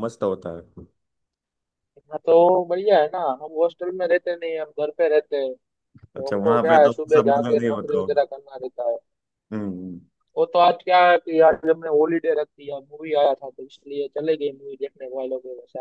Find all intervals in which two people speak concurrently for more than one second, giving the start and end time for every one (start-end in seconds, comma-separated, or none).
6.2-8.2